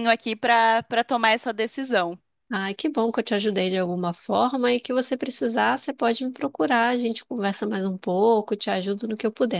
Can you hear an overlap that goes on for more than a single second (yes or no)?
no